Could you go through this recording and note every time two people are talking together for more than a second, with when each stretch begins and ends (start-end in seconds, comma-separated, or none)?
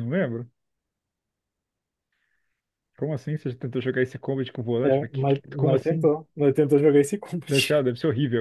4.8-6.1